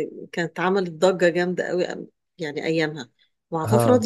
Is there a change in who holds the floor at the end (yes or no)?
no